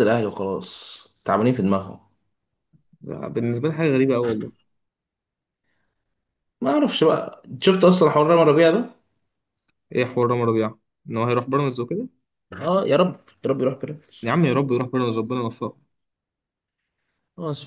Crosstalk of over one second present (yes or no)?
no